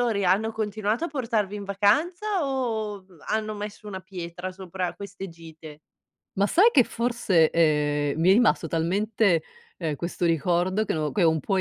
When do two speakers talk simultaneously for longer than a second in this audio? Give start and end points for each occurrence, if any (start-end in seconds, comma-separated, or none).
none